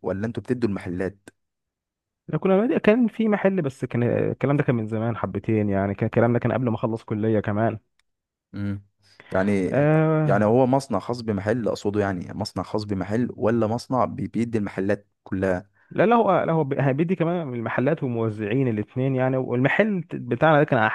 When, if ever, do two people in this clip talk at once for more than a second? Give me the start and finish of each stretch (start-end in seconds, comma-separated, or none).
none